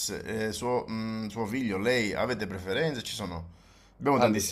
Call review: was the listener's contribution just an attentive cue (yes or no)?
yes